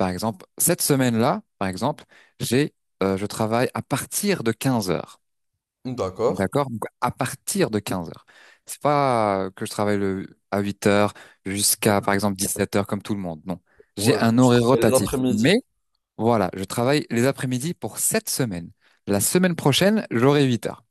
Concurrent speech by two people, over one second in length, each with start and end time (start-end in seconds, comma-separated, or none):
14.0-15.6